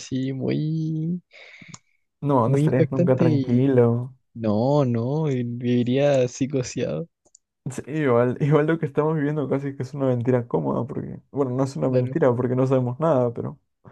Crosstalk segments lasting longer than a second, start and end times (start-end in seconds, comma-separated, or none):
2.5-3.7